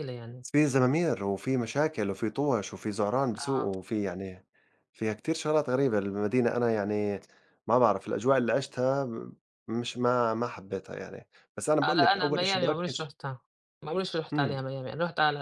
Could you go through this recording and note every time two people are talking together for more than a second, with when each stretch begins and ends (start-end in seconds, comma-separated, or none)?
11.8-13.1